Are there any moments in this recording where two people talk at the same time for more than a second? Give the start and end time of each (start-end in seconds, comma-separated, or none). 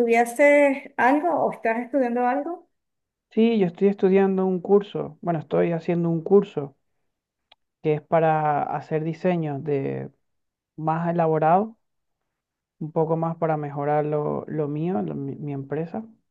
none